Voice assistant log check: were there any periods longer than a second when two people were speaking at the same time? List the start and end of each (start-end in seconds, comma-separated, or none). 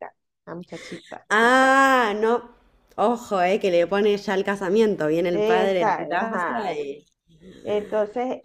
5.3-6.8